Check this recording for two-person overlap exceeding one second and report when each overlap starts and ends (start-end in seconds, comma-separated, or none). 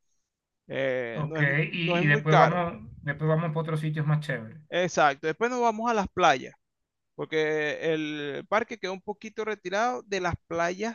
1.1-2.6